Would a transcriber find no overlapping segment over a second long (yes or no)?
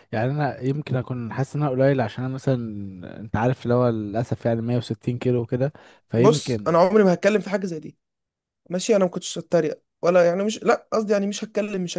yes